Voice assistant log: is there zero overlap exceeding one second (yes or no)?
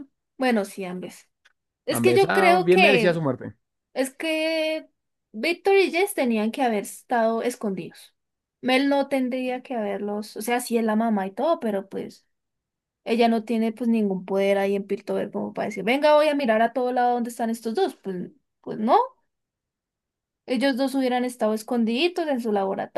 no